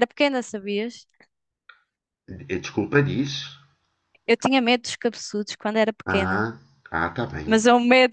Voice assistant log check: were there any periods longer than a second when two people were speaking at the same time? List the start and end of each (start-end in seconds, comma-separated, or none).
none